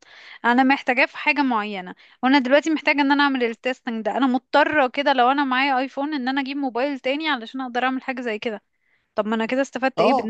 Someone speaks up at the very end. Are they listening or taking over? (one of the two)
taking over